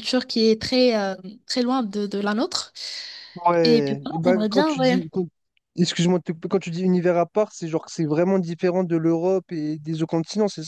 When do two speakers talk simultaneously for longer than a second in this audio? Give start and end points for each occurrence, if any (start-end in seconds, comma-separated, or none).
3.6-5.0